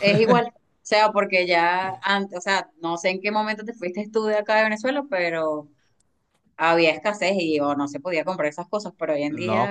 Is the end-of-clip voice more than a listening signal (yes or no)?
yes